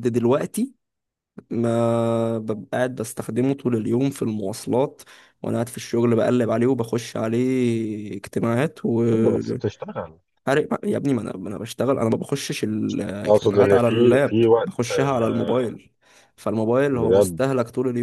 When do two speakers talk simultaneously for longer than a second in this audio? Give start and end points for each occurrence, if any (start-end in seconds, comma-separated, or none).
13.3-15.7